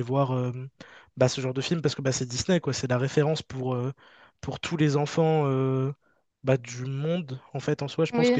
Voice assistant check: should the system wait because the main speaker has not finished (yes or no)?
no